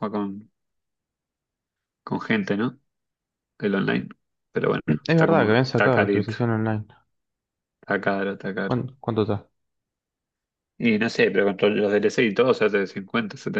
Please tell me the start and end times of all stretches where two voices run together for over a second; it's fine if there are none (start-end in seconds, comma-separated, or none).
5.0-6.3